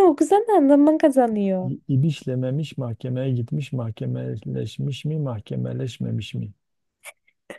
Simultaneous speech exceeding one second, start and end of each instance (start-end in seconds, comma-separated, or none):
none